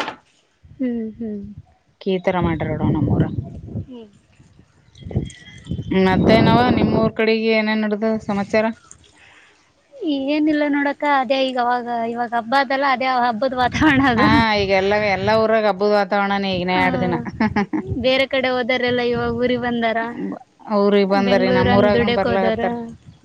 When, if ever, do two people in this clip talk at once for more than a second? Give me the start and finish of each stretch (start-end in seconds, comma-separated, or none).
21.3-22.6